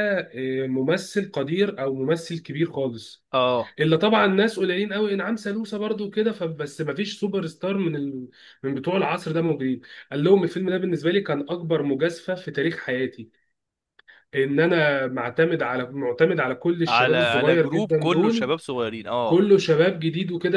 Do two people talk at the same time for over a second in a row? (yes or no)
yes